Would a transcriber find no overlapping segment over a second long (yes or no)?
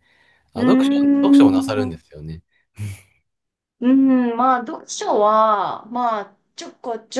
no